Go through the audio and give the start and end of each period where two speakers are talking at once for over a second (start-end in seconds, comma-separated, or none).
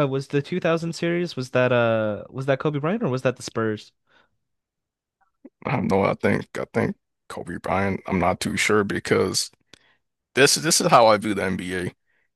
none